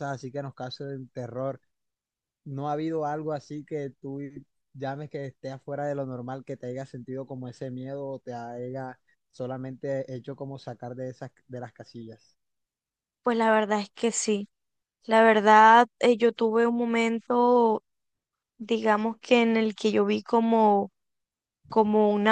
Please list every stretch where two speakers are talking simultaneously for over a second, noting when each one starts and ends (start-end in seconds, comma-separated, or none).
none